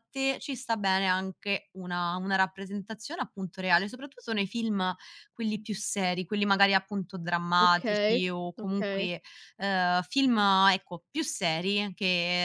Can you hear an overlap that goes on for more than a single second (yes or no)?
yes